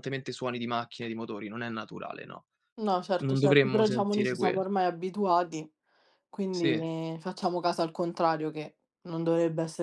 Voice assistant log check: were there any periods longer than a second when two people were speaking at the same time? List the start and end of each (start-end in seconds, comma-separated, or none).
3.2-4.6